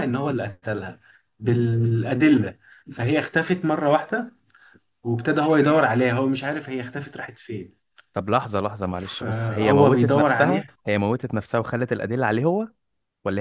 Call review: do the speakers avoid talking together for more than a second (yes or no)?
no